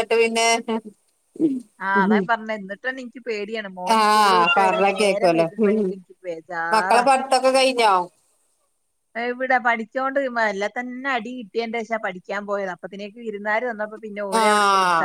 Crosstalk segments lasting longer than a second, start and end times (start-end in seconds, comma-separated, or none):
4.0-5.9